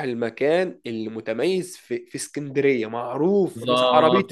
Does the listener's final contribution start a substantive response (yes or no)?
yes